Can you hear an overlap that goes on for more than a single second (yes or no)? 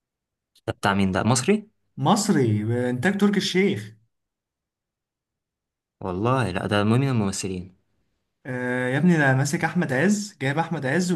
no